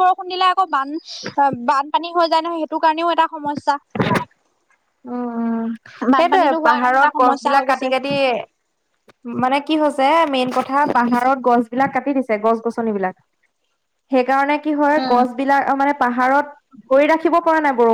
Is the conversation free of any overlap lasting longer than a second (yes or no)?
no